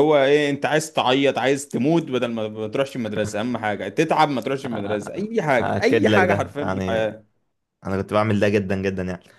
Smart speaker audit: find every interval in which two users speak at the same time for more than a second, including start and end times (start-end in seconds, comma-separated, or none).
5.6-7.0